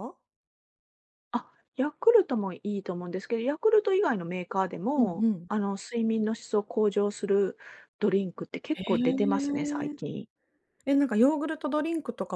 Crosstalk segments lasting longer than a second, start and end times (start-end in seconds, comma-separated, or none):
8.7-9.9